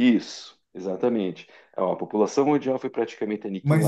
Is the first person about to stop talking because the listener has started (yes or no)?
yes